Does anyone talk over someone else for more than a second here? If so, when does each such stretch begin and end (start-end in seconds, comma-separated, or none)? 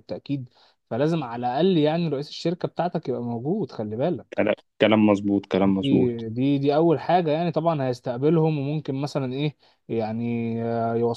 none